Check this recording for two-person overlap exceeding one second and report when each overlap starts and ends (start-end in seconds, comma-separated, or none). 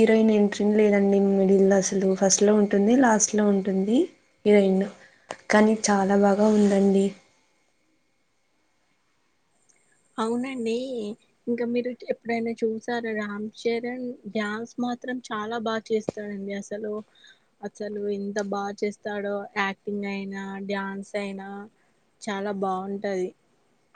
none